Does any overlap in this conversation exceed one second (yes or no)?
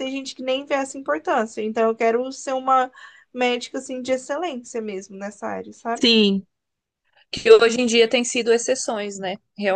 no